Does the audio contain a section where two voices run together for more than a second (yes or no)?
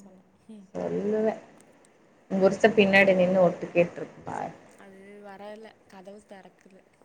no